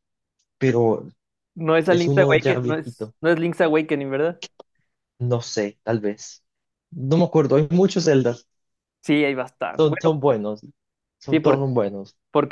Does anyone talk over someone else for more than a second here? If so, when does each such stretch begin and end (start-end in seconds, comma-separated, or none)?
1.8-3.1